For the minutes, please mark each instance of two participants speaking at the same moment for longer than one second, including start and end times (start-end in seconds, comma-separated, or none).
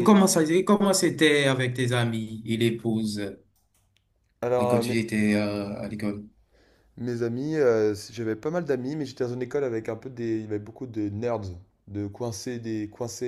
none